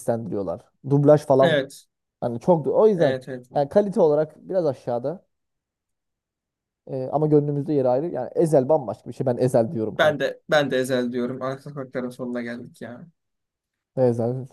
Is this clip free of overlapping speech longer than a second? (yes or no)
yes